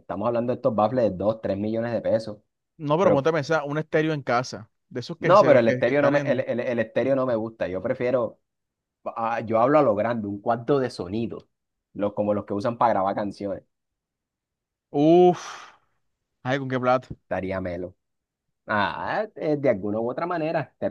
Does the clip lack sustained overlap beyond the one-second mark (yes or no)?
no